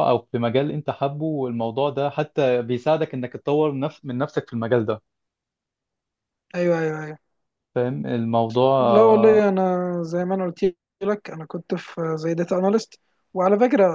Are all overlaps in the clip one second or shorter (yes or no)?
yes